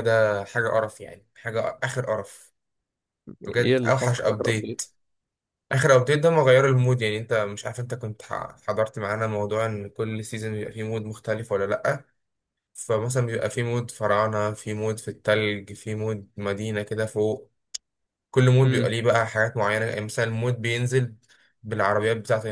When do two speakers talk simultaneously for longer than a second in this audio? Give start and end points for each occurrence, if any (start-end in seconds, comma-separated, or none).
3.4-4.8